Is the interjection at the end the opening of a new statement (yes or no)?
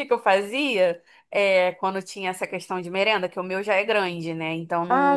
no